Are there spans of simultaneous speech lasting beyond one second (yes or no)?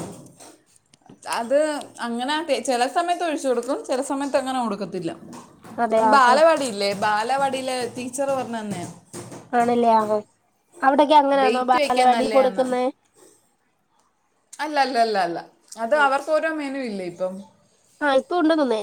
yes